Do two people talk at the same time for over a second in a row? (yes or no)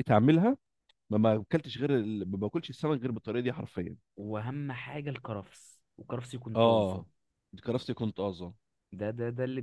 no